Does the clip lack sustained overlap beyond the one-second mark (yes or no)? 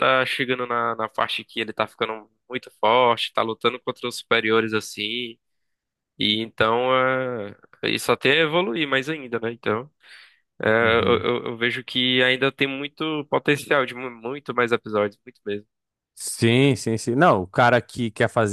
yes